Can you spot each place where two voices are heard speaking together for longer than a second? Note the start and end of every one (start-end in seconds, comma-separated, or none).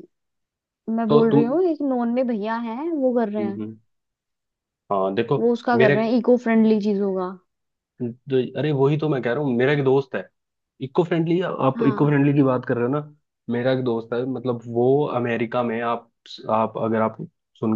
none